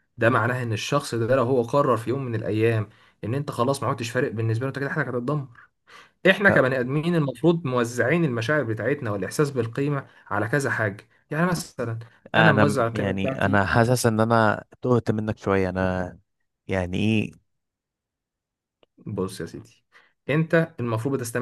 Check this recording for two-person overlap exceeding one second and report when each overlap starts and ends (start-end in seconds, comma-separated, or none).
12.4-13.7